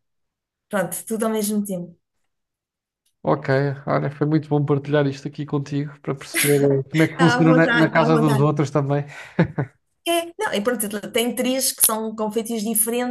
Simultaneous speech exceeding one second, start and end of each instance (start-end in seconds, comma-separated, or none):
7.1-8.5